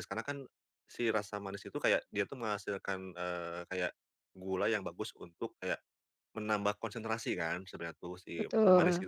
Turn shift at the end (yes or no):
no